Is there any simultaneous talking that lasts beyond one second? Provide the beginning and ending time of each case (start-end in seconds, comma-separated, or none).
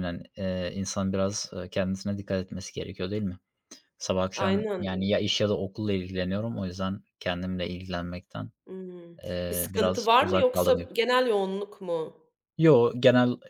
9.2-10.9